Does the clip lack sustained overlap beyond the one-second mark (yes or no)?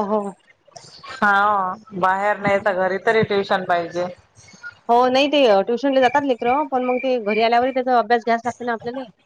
yes